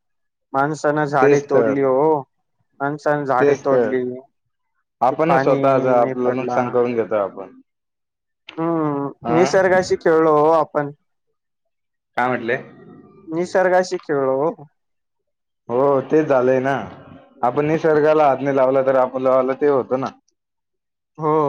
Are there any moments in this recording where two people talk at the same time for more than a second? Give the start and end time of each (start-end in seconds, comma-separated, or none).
5.1-6.6